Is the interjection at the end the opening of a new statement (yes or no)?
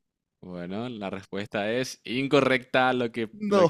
no